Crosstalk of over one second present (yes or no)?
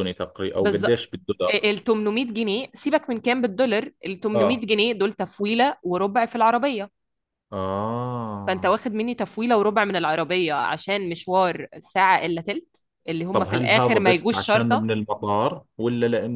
yes